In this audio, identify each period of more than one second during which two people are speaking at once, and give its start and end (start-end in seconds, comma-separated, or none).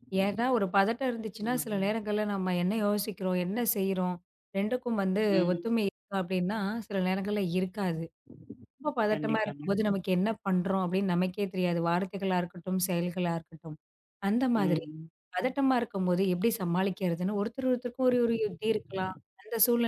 none